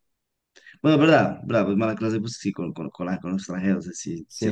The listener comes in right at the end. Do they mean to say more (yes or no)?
yes